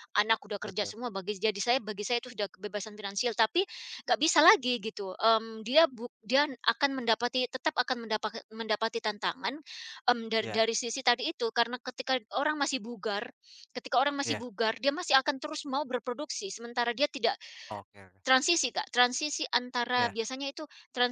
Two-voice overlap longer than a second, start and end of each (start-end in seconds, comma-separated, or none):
none